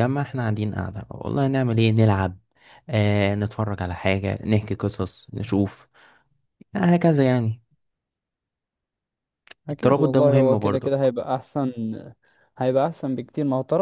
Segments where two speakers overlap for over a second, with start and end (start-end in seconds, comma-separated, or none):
9.7-10.9